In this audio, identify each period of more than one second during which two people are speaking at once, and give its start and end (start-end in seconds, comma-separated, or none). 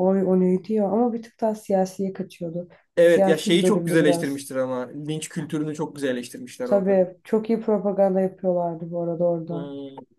3.0-4.5